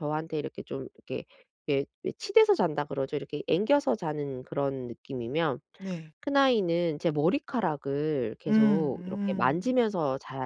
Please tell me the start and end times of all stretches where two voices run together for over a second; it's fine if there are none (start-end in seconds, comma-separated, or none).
8.5-9.7